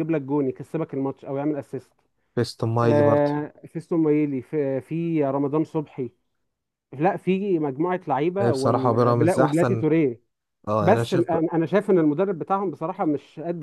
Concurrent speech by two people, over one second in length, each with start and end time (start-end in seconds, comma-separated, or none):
8.4-9.8